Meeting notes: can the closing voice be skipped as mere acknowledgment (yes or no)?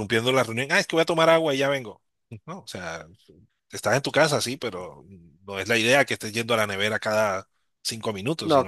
no